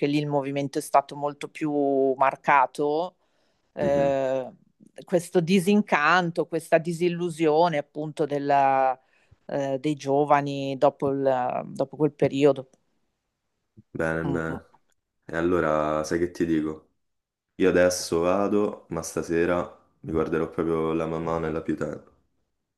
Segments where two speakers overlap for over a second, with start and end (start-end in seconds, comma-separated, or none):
none